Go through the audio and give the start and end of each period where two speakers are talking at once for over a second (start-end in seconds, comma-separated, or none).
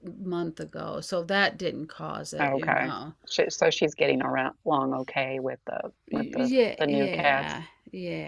6.1-7.6